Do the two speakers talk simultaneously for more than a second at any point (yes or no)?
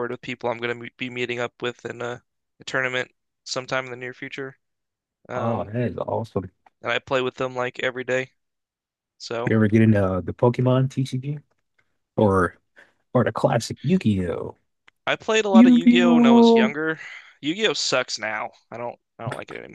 yes